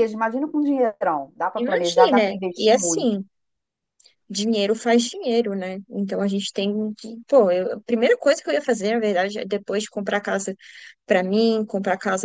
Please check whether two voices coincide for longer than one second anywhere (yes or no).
yes